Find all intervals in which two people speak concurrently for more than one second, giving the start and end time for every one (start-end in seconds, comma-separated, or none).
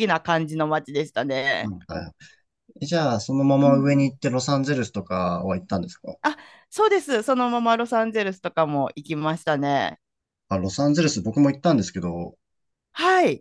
none